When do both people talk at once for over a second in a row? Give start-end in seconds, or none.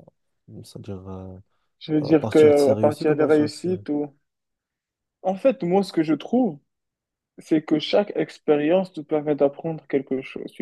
2.1-3.7